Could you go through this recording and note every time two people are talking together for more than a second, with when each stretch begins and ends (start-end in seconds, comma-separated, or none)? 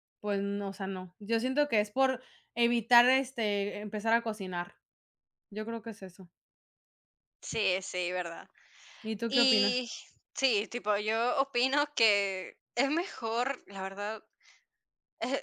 none